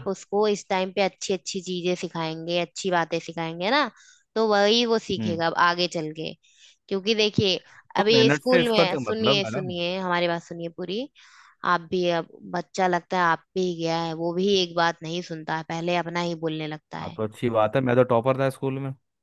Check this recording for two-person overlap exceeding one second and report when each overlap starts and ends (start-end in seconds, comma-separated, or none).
8.0-9.7